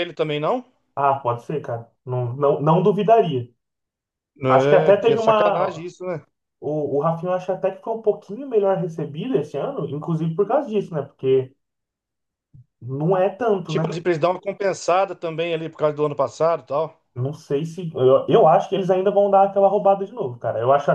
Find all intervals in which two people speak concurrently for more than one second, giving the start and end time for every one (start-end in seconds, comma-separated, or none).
4.5-5.9